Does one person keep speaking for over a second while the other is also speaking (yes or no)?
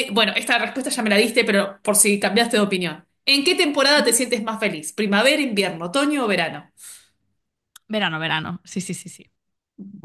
no